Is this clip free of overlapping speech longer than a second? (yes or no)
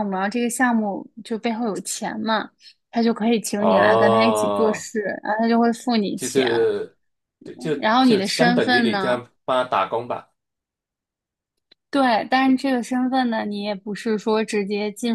no